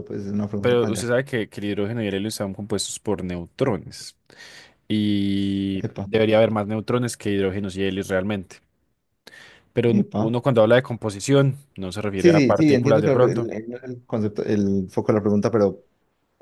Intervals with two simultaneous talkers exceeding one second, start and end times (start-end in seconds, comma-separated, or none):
12.2-13.5